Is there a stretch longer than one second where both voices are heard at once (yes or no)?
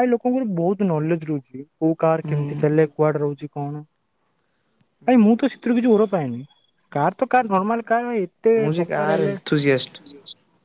yes